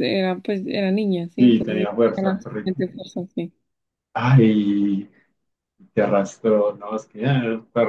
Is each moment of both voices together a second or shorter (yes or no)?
no